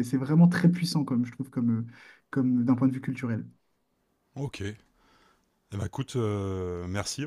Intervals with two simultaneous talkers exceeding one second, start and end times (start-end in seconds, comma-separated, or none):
none